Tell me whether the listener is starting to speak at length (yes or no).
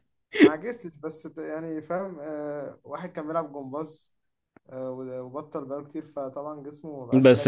yes